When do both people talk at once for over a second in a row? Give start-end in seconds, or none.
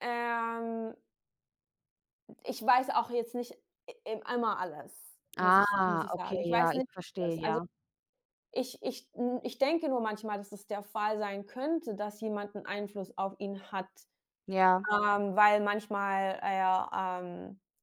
5.4-7.6